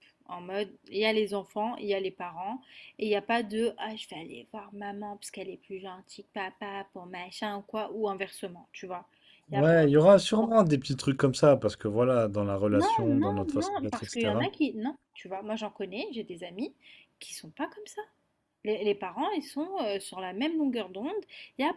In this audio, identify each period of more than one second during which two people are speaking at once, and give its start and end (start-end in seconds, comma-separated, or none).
12.7-14.4